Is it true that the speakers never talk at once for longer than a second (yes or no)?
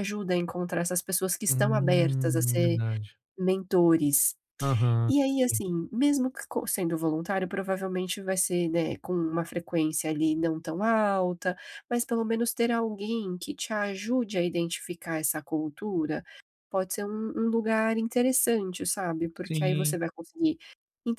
no